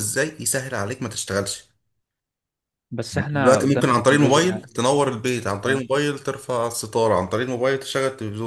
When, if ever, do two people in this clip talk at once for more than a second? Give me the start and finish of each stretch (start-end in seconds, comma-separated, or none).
3.2-4.6